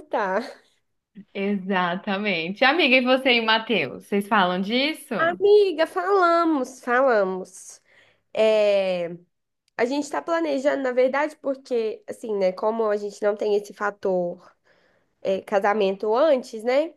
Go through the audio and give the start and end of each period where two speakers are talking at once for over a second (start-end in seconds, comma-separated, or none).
none